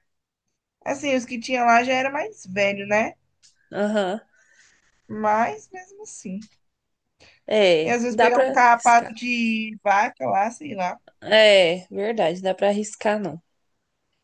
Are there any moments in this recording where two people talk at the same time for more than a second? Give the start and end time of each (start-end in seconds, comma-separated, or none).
7.8-9.1